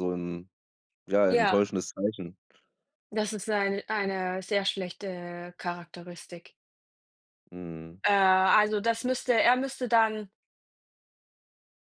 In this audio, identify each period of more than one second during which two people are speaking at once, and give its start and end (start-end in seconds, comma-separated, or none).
none